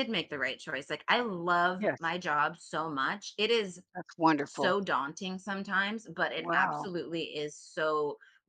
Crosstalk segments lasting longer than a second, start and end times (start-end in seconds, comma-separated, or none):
none